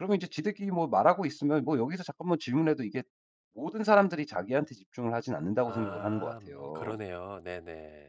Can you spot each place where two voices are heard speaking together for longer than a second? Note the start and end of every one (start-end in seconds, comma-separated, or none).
5.7-7.0